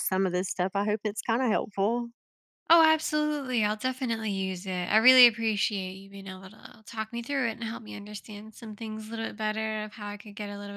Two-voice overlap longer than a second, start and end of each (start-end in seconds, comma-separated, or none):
none